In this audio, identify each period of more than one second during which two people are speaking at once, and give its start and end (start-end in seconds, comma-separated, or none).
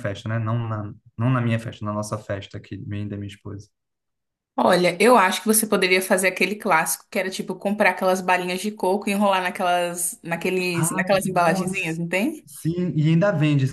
10.7-12.0